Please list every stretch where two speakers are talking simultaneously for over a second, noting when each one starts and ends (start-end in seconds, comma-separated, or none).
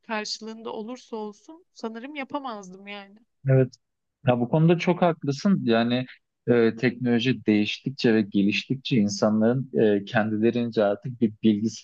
none